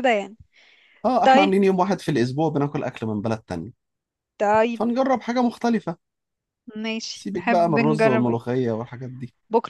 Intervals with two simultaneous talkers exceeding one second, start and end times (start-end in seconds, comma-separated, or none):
7.1-8.5